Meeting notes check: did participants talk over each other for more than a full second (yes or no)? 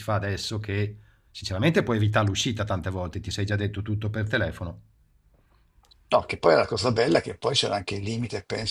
no